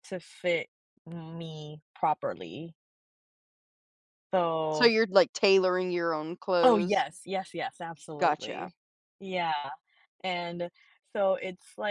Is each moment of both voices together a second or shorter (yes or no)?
yes